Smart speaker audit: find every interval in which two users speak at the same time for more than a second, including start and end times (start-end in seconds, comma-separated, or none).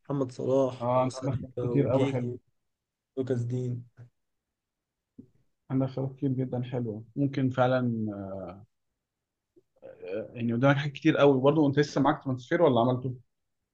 0.8-2.3